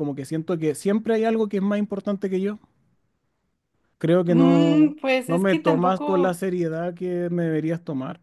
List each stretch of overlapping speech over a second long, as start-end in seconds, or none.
4.3-6.4